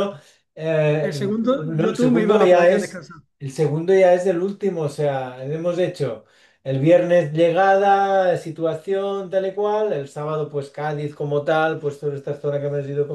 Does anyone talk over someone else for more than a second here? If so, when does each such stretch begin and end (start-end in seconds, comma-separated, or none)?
1.0-3.0